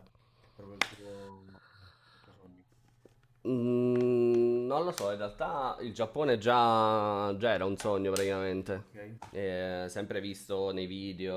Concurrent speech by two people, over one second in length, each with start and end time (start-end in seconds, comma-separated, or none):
none